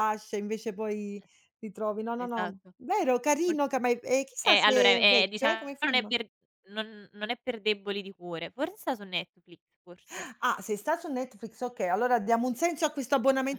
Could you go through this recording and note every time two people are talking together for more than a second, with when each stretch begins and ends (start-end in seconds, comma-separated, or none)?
4.4-6.1